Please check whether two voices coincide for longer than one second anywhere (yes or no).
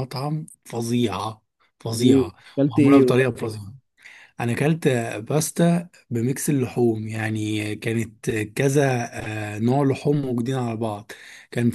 yes